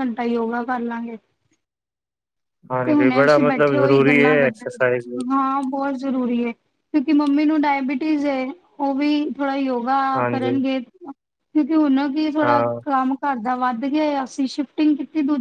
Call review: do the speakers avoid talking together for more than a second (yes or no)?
no